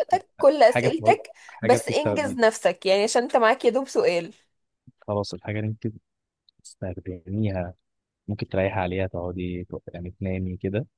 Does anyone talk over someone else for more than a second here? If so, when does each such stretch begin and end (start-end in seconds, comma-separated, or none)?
0.6-2.4